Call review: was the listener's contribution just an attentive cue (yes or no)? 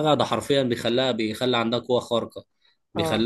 yes